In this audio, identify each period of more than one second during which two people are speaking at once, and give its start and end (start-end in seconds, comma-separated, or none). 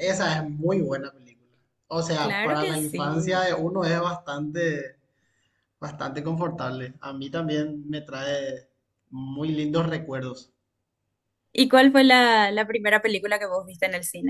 2.2-3.4